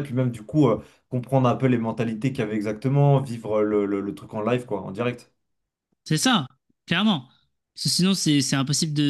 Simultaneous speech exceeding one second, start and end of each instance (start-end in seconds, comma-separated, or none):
none